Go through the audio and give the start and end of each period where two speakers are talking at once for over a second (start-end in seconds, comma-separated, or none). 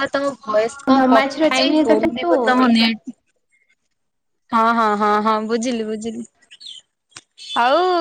1.0-2.9